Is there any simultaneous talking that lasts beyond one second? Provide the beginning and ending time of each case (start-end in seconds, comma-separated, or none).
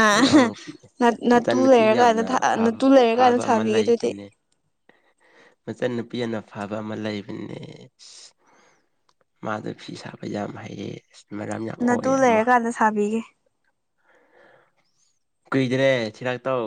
2.6-4.1